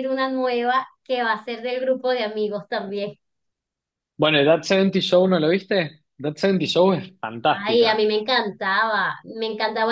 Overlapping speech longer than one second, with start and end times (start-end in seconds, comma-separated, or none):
none